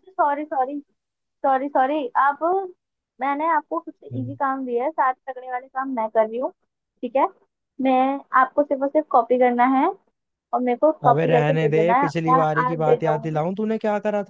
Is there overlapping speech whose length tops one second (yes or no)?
yes